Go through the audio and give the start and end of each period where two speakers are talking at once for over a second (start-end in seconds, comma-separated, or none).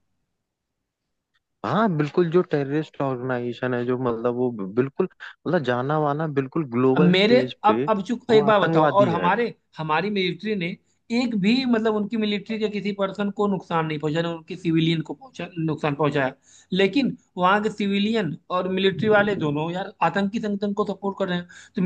6.9-9.3